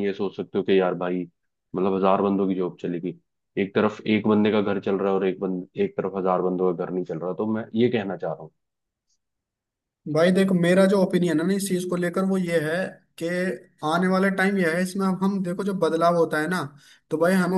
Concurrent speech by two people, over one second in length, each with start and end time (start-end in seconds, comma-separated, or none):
none